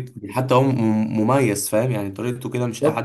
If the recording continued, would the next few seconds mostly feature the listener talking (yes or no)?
yes